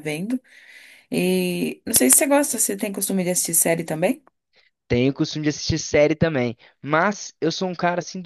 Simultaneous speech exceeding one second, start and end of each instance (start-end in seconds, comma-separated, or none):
none